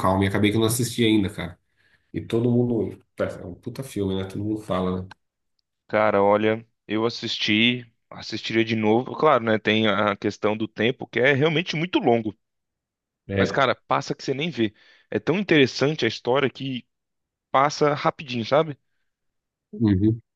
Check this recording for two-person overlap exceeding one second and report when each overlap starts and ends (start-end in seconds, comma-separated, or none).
none